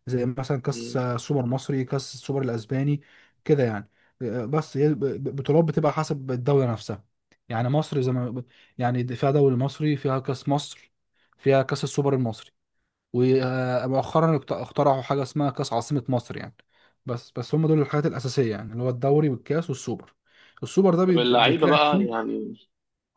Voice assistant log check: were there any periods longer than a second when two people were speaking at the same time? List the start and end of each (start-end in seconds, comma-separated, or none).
21.1-22.3